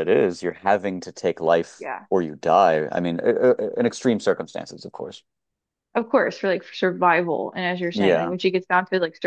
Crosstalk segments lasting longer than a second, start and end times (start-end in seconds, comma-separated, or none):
none